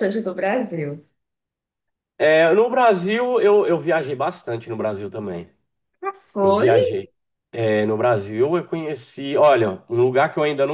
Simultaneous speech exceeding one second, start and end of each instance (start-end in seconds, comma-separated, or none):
none